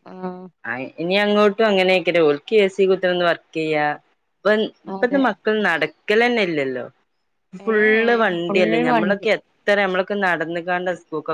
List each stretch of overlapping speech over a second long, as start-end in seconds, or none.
7.7-9.3